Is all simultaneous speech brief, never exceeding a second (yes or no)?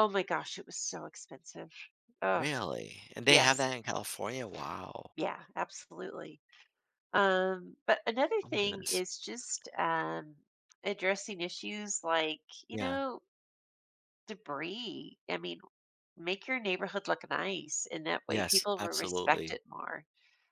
no